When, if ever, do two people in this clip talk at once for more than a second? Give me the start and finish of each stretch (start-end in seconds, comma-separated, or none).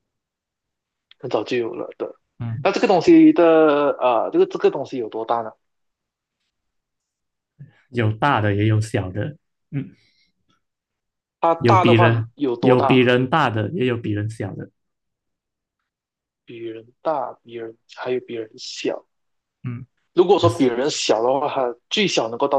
11.6-13.1